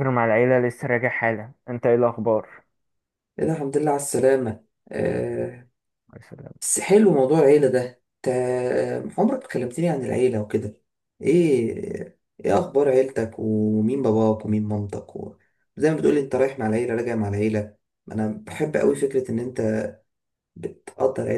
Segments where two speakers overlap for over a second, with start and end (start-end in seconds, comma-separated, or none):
none